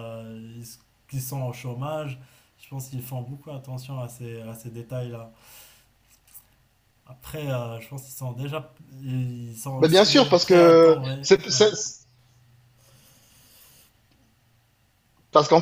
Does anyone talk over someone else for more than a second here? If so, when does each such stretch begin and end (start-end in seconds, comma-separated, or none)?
9.8-11.7